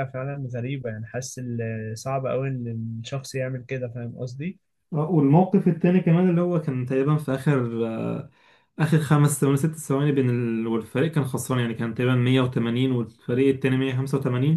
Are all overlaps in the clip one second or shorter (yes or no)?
yes